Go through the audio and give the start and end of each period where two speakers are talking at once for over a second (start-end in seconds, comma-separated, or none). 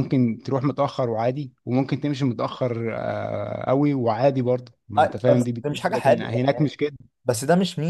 5.0-6.7